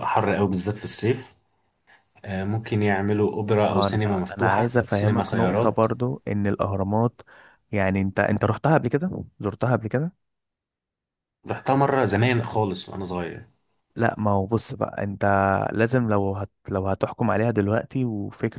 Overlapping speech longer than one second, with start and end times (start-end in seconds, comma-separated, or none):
3.7-5.9